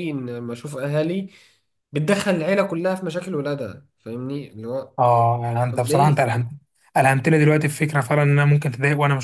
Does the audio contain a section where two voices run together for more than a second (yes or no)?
no